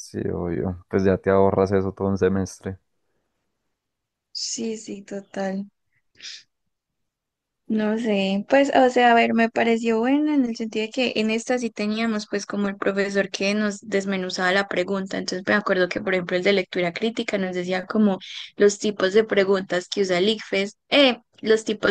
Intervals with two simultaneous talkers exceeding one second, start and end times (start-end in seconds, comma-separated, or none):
none